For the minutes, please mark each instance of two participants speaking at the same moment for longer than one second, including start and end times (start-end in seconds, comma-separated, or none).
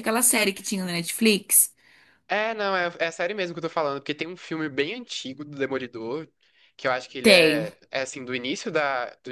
none